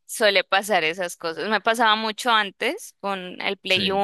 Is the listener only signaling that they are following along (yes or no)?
yes